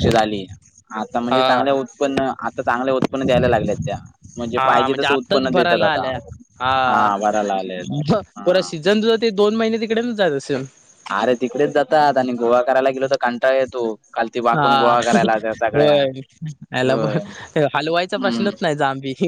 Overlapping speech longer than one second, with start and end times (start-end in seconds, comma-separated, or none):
4.6-6.1